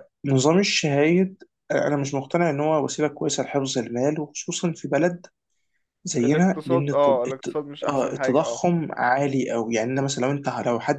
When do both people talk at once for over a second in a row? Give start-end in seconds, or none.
6.2-8.6